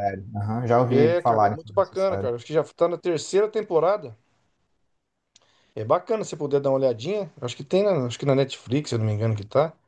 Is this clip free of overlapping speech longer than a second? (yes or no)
no